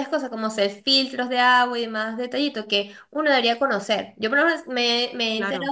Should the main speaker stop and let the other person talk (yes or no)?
no